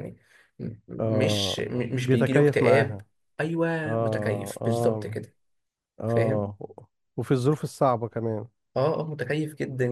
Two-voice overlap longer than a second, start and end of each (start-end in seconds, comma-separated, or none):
1.0-3.0, 3.9-5.2